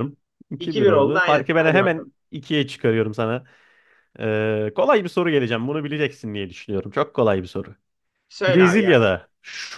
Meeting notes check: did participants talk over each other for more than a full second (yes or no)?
yes